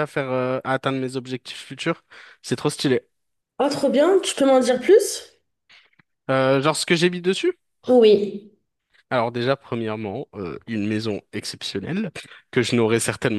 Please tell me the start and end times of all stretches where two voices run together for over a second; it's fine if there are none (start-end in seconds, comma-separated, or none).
none